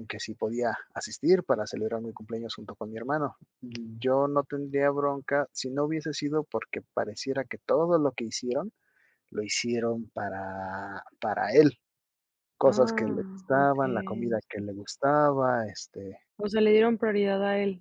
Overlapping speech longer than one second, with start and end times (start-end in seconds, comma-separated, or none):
12.7-14.6